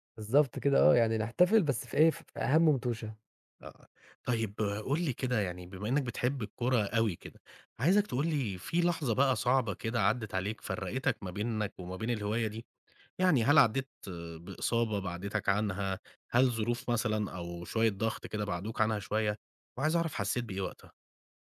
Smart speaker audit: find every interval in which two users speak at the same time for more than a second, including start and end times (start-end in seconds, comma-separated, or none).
none